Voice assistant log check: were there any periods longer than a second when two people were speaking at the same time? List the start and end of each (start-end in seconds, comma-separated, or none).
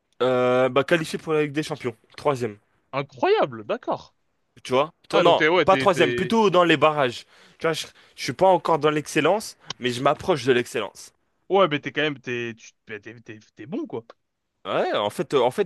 5.1-6.3